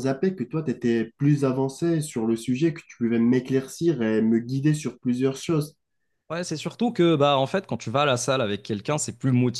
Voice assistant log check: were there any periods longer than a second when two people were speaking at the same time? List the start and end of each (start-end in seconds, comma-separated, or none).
none